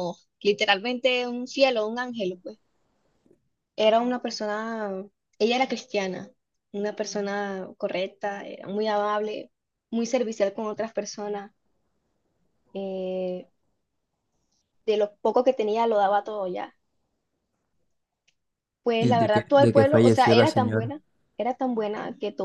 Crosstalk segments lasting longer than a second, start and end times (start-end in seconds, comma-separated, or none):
19.0-20.9